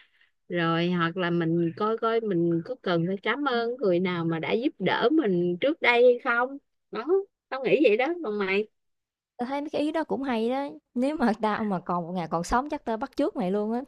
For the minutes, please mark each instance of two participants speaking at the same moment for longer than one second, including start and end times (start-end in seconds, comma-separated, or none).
none